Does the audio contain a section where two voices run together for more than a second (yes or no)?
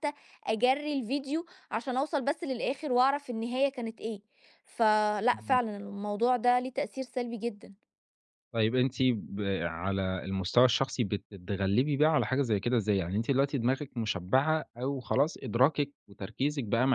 no